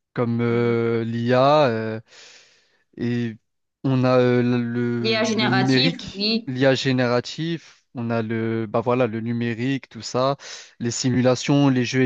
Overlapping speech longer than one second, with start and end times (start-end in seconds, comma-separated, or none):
5.0-6.5